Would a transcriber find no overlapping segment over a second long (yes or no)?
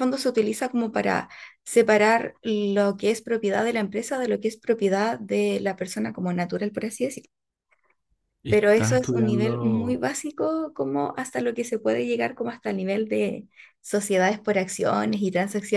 no